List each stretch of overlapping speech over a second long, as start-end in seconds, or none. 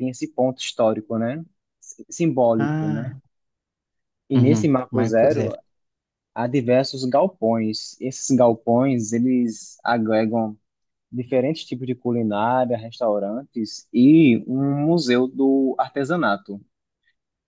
4.3-5.5